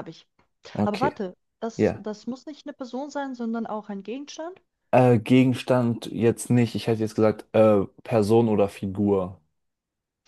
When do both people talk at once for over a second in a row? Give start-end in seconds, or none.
none